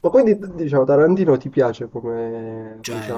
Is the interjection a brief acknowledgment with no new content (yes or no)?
no